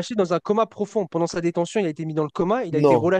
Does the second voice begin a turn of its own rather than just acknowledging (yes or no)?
no